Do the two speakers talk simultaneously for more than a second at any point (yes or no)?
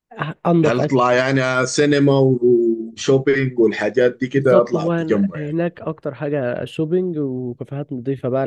yes